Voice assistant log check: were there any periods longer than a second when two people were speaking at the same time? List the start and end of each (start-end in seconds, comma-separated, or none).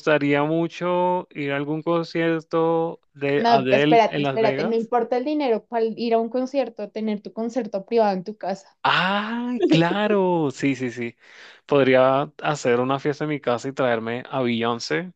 3.4-4.9